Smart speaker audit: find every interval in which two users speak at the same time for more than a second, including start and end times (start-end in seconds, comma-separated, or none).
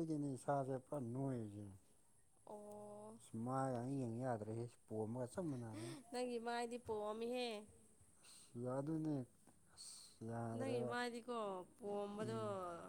none